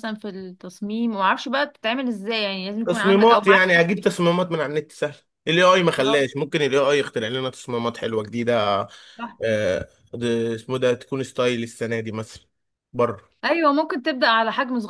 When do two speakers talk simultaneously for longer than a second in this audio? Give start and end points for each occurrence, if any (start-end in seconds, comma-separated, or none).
2.9-4.0